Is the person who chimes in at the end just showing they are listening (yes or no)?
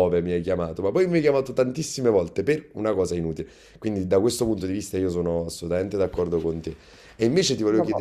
yes